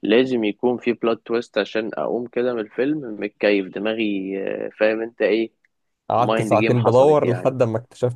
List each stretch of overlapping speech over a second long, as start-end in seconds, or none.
6.2-7.5